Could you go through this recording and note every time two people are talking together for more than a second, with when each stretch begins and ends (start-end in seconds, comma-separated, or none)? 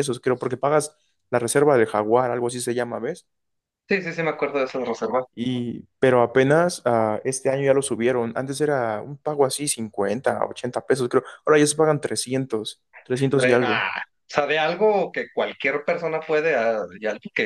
none